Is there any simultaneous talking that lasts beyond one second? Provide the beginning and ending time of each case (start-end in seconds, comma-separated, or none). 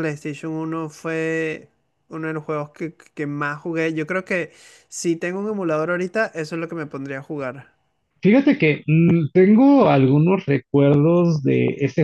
none